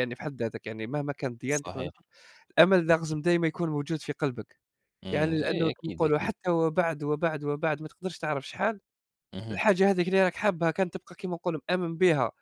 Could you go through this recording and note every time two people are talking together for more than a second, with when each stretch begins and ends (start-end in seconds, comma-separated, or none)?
5.1-6.3